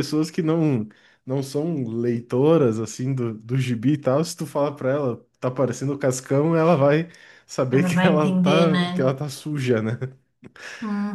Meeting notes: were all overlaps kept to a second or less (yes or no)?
no